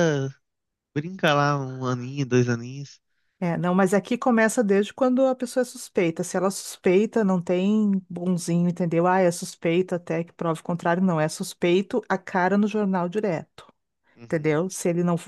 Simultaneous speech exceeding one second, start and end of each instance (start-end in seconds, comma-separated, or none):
none